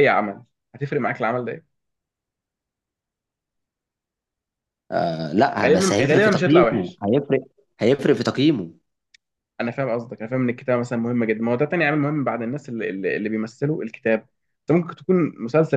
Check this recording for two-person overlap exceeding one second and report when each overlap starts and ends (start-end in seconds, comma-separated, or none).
5.7-7.0